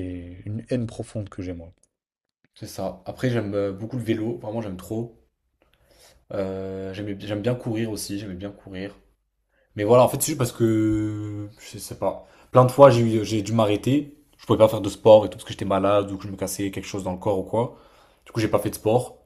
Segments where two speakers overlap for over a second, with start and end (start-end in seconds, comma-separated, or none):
none